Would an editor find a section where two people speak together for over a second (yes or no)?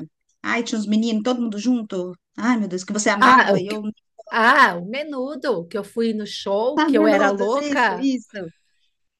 yes